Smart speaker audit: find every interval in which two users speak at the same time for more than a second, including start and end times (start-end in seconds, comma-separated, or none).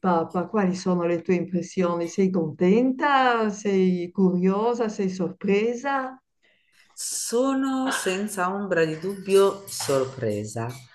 none